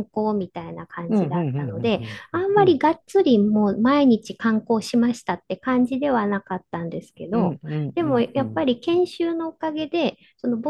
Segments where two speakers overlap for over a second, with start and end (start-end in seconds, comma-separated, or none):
1.1-2.8